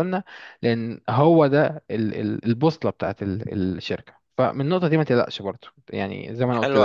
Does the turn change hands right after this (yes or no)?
yes